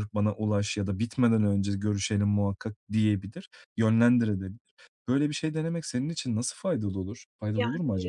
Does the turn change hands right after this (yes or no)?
yes